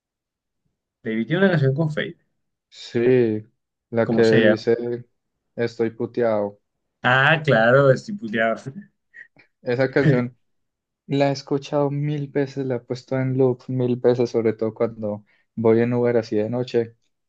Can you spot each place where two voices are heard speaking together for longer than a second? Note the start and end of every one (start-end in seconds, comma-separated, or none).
none